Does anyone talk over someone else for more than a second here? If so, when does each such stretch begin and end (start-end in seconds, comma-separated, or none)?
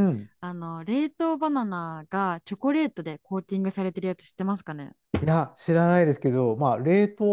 none